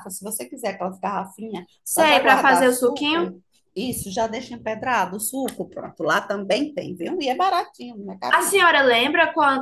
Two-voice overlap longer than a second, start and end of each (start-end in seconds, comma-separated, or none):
1.8-3.3